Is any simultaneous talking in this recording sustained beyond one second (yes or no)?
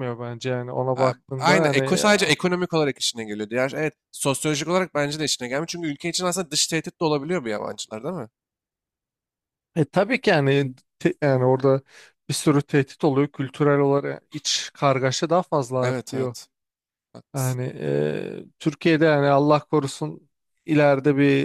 yes